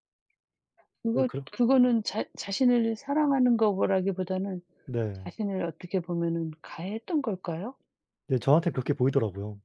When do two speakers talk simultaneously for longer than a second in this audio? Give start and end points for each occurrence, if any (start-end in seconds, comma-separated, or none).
none